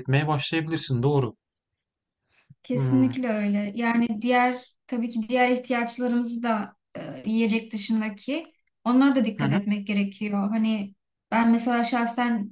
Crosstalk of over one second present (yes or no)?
no